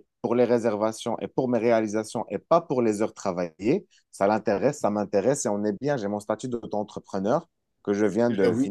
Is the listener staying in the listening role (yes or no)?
yes